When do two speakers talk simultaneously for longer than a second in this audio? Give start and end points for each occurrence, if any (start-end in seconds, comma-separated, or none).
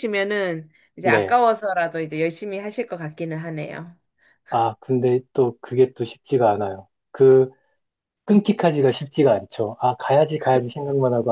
none